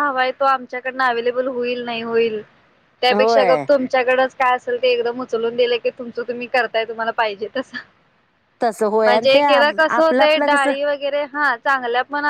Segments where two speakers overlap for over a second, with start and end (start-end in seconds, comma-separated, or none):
9.0-10.7